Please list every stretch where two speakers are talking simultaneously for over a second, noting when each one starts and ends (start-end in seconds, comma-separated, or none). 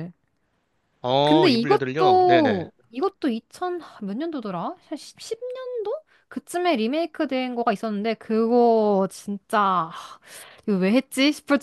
1.2-2.7